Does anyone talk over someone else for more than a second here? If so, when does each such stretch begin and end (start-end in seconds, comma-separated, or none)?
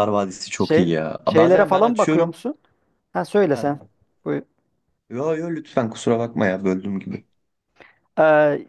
0.6-2.3